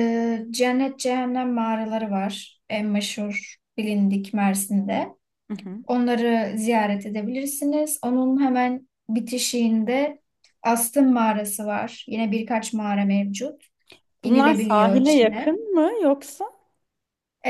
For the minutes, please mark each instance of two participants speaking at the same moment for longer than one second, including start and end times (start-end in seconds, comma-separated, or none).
14.2-15.6